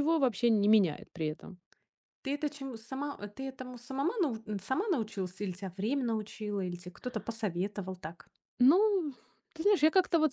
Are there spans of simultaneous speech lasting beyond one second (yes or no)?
no